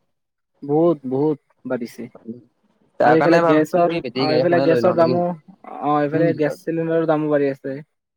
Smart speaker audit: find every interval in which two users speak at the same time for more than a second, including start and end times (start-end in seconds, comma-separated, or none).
3.1-5.1